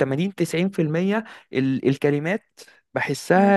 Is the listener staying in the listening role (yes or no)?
no